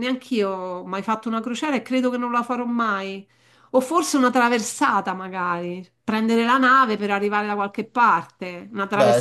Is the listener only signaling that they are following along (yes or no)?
yes